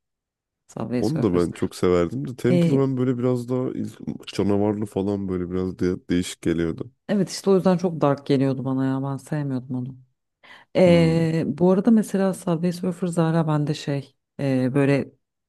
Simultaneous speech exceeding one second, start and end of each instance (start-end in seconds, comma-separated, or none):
none